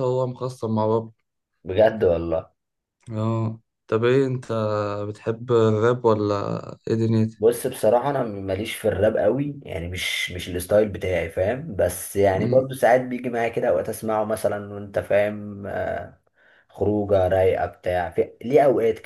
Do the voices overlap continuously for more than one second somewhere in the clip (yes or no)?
no